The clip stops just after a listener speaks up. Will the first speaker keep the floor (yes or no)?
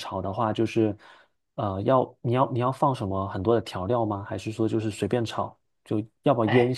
no